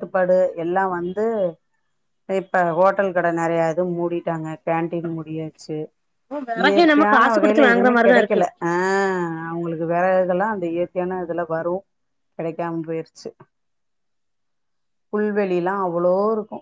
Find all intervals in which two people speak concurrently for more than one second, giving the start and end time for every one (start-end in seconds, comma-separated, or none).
6.6-8.4